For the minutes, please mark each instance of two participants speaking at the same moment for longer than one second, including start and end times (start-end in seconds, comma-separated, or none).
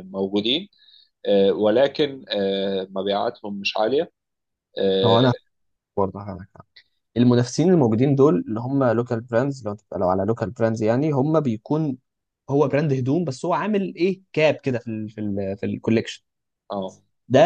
none